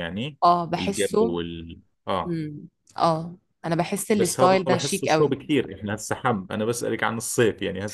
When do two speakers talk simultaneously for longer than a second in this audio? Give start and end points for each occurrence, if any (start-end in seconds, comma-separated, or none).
4.1-5.3